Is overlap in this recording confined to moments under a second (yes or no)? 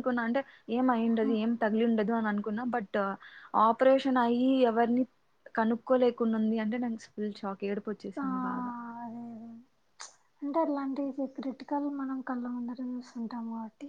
yes